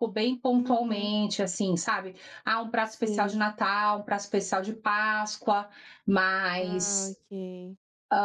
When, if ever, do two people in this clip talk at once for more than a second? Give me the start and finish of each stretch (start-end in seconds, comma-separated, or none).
none